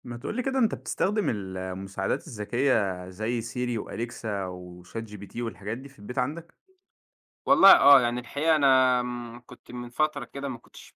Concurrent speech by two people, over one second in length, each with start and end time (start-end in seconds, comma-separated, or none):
none